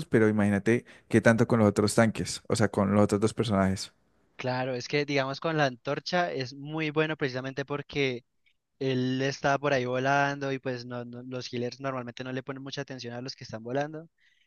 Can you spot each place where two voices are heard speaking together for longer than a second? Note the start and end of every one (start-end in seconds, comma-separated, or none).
none